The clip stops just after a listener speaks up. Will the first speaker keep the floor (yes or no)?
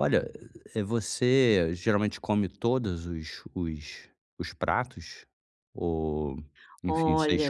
no